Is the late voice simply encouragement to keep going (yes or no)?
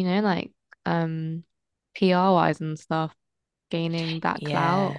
no